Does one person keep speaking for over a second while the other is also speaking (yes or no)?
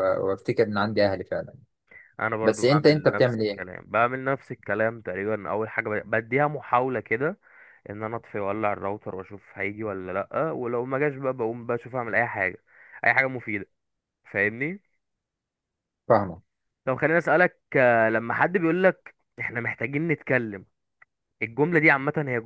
yes